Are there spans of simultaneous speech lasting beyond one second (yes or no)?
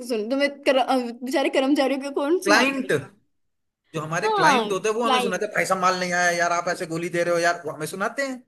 yes